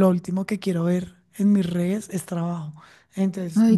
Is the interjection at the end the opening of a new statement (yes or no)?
no